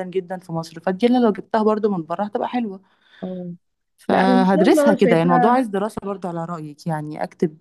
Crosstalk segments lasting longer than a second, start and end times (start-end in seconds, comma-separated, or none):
4.1-5.6